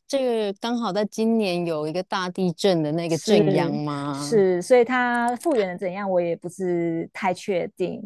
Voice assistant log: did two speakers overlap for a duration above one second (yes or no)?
yes